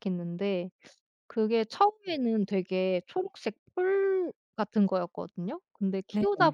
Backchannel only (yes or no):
yes